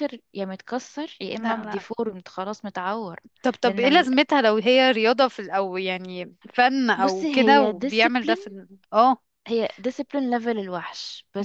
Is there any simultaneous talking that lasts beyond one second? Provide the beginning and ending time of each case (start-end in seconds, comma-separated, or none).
7.0-8.5